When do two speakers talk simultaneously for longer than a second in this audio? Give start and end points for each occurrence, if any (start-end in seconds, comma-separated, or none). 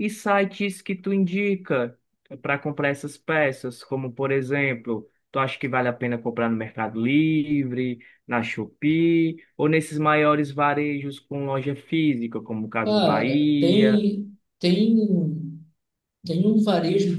12.8-14.1